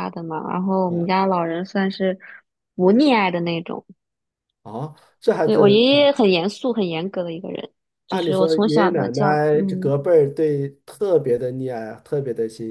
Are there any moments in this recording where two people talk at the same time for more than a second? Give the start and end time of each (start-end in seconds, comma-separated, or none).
8.1-9.9